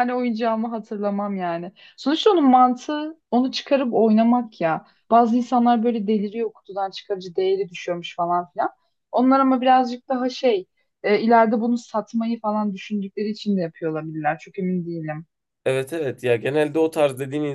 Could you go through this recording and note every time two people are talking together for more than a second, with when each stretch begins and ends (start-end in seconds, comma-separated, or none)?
none